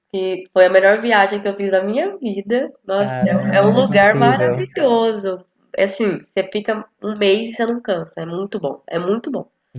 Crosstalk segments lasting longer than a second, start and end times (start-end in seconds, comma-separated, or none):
3.0-4.7